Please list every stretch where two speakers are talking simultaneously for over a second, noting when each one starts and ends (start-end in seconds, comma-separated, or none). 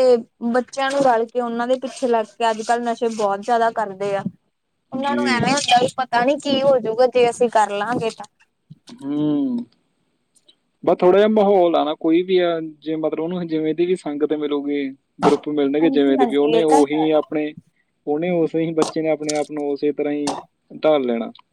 15.8-17.0